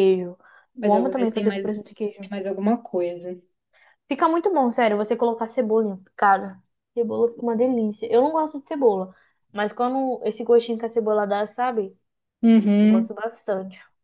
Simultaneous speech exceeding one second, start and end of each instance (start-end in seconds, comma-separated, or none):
0.8-2.3